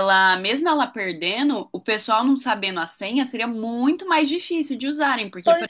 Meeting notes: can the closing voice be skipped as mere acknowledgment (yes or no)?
no